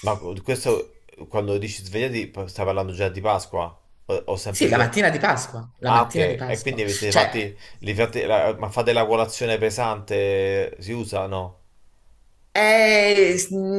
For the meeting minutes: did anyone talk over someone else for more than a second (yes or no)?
yes